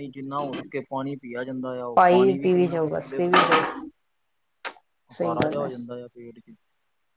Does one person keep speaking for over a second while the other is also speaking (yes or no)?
yes